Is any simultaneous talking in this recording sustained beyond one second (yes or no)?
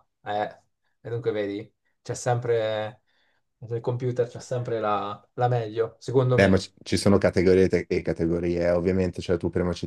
no